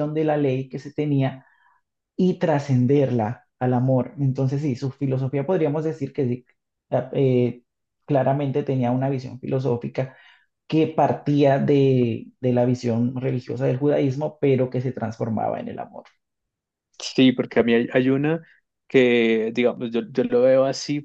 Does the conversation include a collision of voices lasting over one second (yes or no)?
no